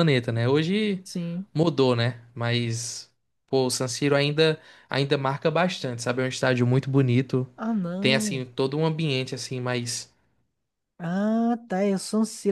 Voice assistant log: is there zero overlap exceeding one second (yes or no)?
yes